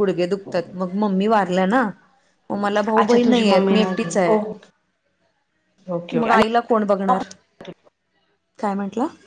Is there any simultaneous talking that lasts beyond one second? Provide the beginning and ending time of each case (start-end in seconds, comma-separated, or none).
3.0-4.4